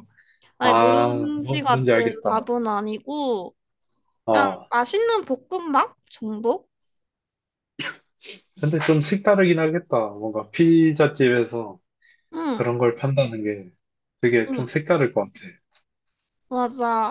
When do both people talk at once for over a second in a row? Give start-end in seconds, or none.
0.6-2.4